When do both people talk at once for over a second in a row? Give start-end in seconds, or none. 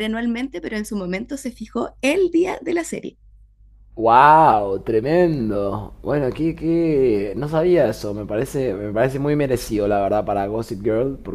none